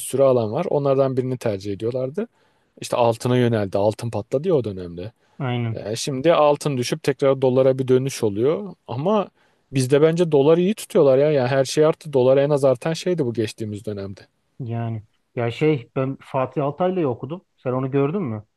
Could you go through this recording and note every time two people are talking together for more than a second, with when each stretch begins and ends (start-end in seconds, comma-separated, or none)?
none